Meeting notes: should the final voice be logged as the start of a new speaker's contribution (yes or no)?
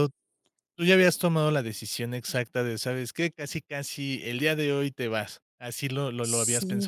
yes